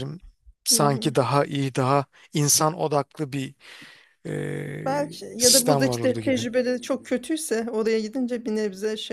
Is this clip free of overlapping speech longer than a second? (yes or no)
no